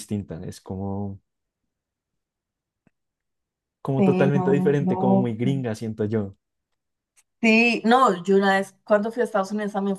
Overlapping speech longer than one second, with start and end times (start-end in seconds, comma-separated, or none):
4.0-5.5